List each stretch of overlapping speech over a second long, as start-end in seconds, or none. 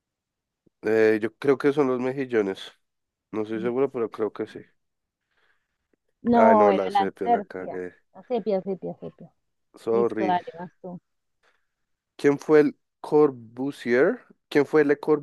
6.3-7.9